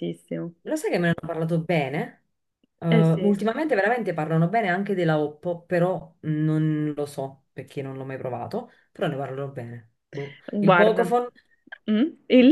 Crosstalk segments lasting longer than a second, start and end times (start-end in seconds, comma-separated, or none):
none